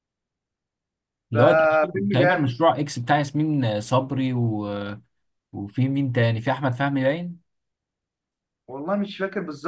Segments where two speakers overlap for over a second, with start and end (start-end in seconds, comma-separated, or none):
1.3-2.5